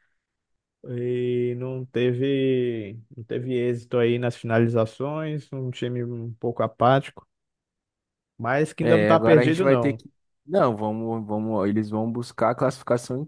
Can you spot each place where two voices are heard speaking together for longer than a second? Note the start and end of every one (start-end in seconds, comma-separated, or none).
8.8-10.0